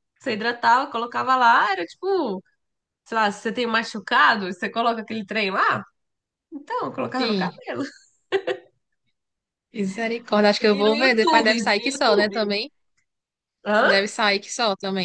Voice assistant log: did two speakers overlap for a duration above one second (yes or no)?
yes